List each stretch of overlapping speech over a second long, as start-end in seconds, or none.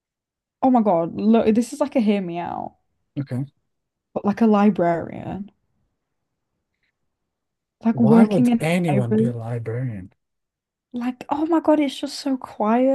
7.9-9.3